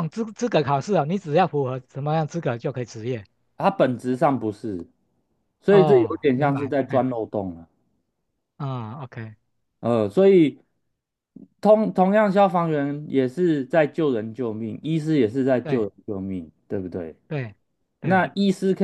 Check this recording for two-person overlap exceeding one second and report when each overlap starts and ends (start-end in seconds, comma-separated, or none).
5.7-7.0